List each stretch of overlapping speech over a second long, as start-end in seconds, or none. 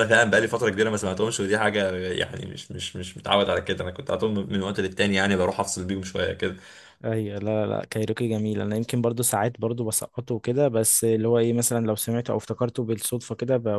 none